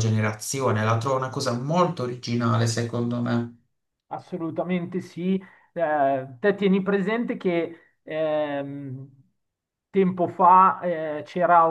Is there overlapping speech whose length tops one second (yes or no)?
no